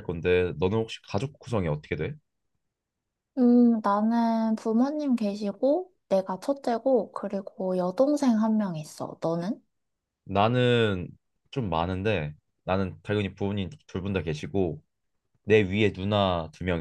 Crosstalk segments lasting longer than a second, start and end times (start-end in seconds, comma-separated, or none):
none